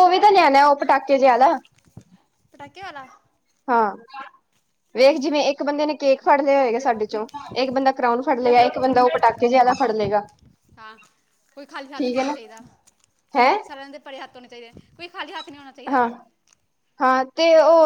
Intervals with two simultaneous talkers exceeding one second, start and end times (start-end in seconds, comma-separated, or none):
none